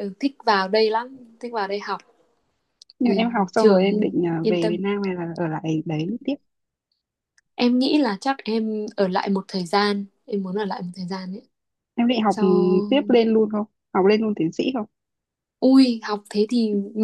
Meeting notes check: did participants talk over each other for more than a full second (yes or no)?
yes